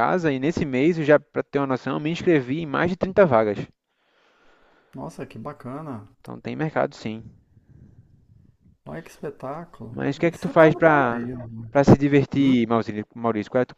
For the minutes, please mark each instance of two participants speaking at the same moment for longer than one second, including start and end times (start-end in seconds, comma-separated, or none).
9.9-11.3